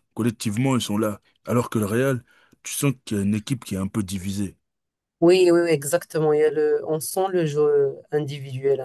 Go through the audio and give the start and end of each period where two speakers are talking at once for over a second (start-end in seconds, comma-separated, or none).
none